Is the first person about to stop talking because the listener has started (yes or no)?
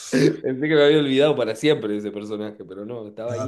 yes